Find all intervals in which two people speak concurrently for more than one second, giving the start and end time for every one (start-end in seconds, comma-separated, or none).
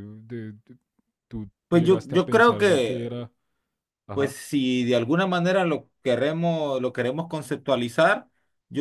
1.7-3.1